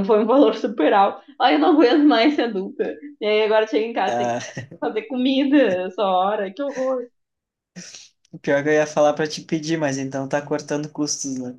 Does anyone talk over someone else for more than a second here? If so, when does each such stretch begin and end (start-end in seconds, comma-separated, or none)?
none